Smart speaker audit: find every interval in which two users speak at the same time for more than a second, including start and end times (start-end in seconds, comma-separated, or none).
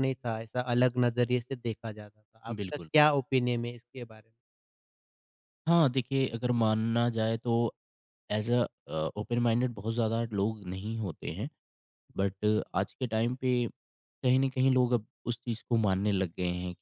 none